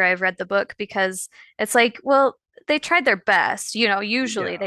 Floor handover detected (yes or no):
no